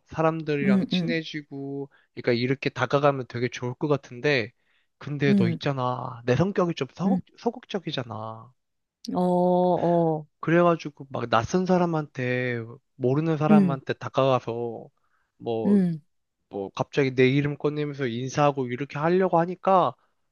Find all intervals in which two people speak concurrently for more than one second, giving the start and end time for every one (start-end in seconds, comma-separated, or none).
none